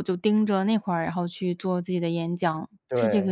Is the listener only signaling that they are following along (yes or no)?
no